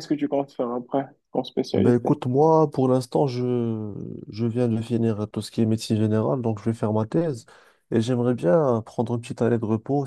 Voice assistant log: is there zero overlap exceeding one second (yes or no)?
yes